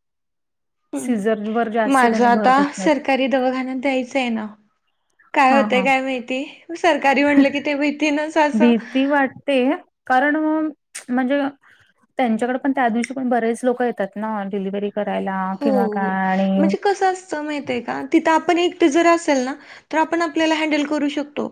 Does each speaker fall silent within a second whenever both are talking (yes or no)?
no